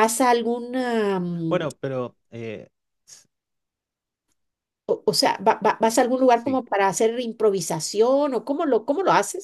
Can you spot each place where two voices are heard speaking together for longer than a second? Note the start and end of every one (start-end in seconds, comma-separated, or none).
none